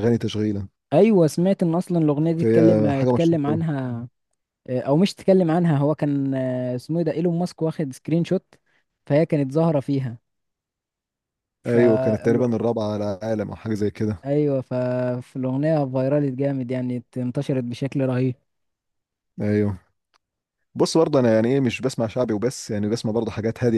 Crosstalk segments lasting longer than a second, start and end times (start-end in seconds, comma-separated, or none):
2.4-3.6